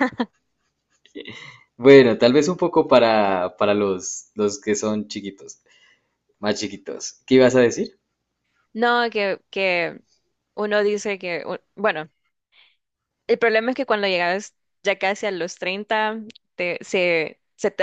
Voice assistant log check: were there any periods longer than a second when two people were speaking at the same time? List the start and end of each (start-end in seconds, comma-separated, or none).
none